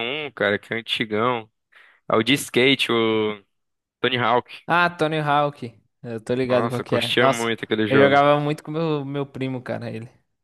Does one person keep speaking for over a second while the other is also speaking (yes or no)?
yes